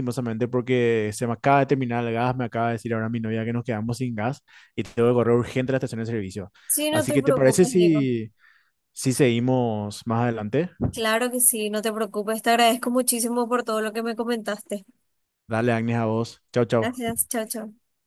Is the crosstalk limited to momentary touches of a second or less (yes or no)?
no